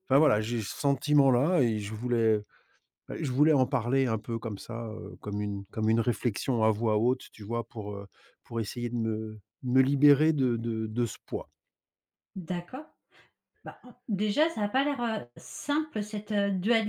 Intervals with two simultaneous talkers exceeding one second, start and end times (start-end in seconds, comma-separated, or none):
none